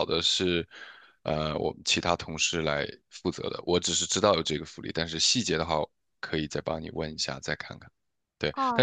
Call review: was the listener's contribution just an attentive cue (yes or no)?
no